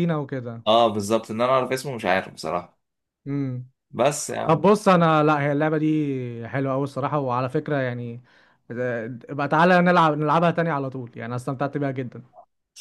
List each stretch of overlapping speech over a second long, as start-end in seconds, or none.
none